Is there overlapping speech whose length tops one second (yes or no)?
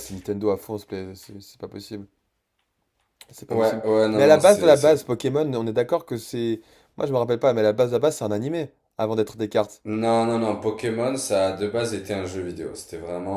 yes